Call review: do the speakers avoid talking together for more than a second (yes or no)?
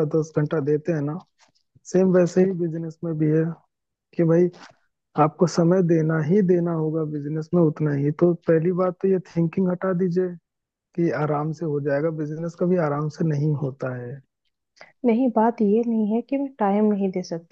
yes